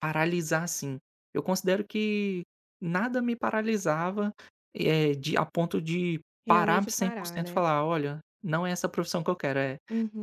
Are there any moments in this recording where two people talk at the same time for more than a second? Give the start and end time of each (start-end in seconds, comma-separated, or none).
6.4-7.6